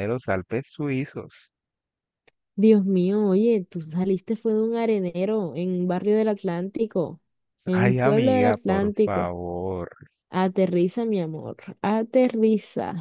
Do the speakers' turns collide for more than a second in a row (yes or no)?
yes